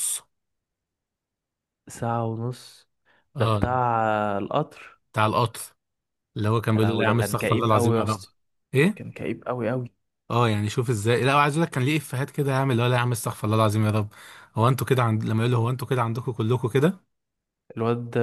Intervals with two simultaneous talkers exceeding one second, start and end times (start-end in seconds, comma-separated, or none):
6.7-8.2